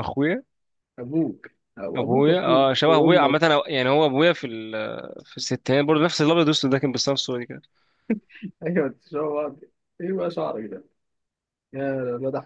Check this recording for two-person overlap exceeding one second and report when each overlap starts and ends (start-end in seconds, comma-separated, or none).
1.9-3.5